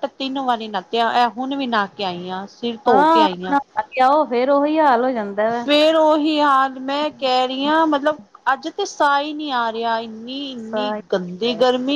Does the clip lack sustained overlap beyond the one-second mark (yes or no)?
yes